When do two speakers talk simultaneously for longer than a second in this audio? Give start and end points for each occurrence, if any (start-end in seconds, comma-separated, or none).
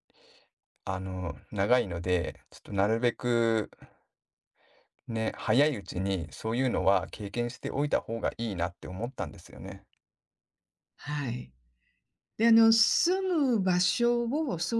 none